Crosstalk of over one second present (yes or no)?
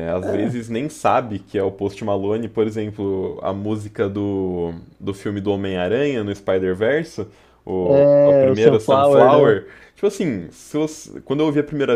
yes